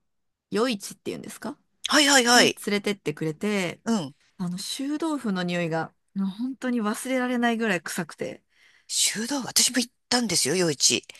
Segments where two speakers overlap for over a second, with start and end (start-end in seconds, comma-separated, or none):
none